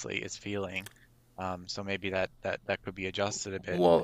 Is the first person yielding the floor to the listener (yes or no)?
yes